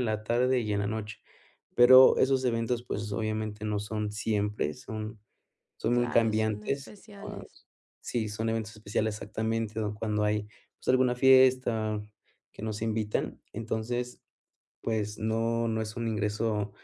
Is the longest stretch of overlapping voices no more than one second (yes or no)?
no